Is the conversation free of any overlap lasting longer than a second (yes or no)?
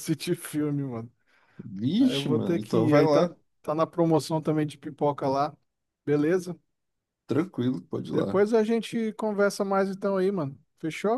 no